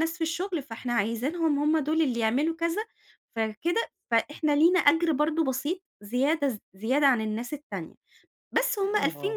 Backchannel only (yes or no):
yes